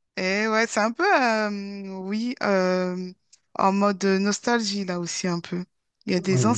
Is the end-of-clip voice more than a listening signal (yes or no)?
no